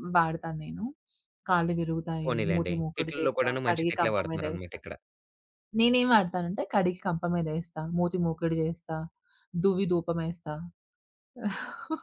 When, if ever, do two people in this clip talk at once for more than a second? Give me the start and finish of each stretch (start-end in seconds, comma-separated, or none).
2.2-4.8